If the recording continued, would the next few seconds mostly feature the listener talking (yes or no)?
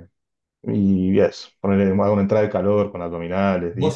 yes